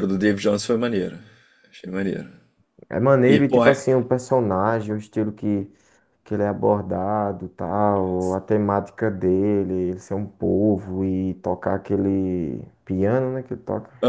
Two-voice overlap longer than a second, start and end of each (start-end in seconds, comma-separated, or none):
none